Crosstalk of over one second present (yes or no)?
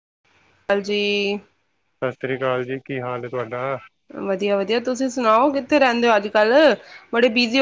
no